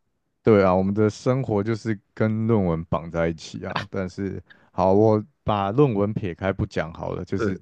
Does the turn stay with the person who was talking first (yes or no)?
yes